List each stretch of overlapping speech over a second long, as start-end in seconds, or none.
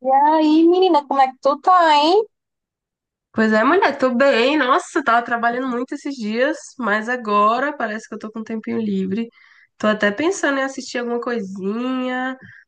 none